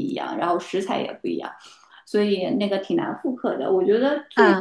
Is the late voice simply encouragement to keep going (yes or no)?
yes